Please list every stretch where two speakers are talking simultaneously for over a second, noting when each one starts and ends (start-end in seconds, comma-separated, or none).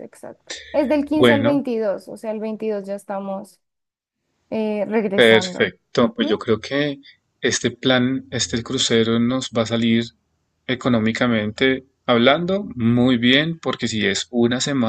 5.1-6.4